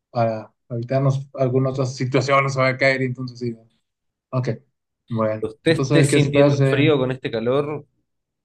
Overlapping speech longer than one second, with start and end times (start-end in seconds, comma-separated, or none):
5.4-6.8